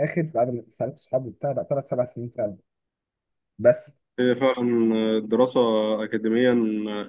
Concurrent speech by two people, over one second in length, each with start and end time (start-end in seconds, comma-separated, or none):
none